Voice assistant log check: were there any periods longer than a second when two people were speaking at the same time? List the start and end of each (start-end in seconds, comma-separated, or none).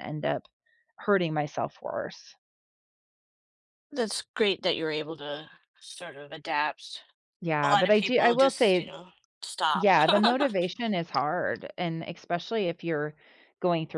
7.6-8.9